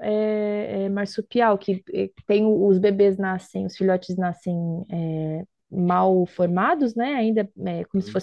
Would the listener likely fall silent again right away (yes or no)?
yes